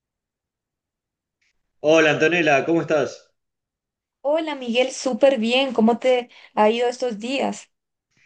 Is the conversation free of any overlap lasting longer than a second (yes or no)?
yes